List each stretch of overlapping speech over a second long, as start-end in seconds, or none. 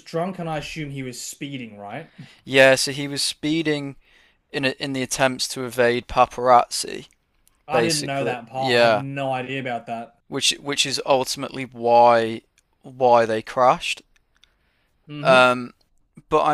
7.7-9.0